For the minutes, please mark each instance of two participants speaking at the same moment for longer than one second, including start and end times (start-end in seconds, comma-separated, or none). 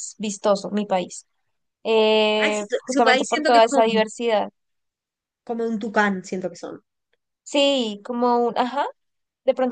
2.4-3.8